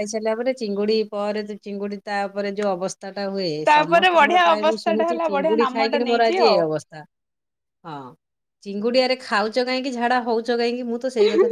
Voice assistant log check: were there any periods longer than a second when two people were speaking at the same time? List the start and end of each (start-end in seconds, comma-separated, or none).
3.7-6.6